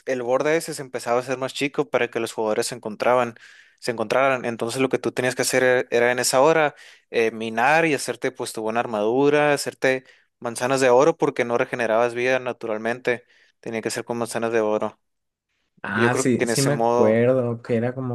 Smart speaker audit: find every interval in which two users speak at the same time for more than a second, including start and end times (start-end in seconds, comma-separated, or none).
15.9-17.2